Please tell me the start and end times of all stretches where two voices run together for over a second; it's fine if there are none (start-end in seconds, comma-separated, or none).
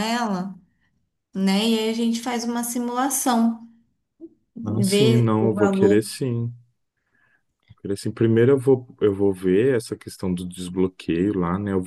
4.6-6.0